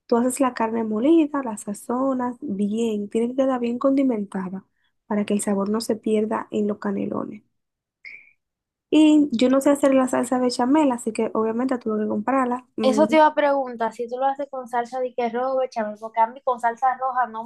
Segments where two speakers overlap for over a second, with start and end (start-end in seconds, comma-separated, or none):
none